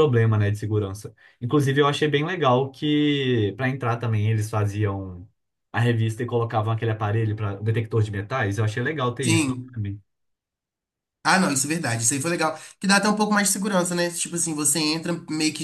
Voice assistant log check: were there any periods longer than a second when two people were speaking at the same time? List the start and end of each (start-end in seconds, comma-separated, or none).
none